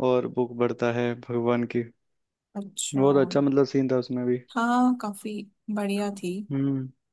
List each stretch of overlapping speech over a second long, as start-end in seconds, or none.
none